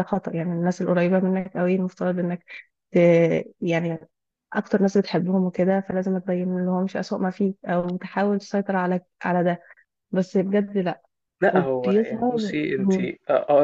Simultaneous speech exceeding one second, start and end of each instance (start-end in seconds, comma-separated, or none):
11.5-12.9